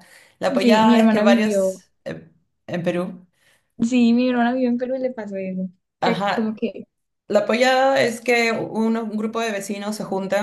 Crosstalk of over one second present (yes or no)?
yes